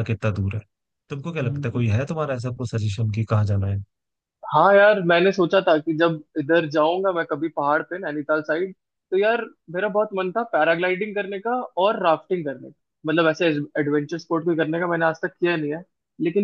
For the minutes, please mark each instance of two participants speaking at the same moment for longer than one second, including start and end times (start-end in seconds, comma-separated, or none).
none